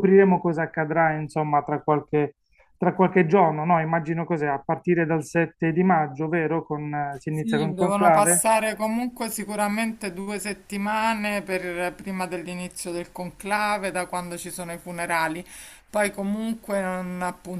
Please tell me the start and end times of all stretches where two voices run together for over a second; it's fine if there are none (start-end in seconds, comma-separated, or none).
7.3-8.5